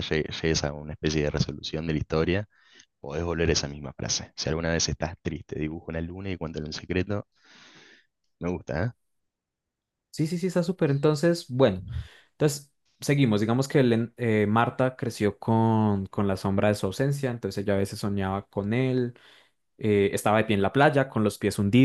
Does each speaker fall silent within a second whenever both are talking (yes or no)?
yes